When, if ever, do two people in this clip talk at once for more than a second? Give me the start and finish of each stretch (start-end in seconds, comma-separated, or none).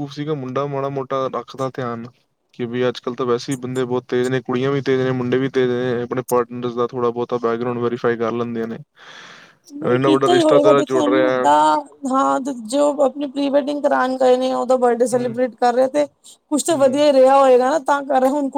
9.9-11.5